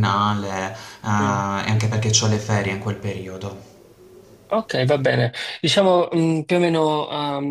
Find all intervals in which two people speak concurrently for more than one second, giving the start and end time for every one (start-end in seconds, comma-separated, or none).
none